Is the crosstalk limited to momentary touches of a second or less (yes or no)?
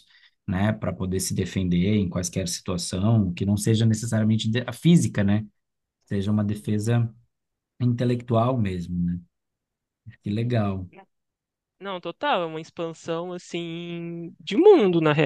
yes